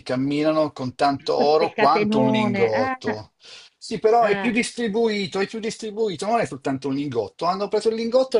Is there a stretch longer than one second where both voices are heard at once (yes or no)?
yes